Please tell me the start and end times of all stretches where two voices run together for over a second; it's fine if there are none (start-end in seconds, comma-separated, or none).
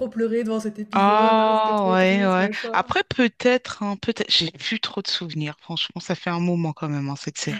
0.9-2.8